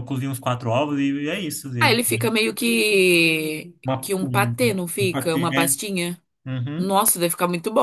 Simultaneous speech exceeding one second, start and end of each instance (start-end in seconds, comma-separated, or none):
3.8-5.8